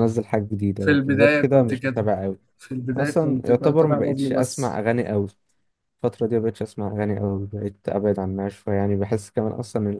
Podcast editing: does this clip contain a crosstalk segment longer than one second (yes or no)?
yes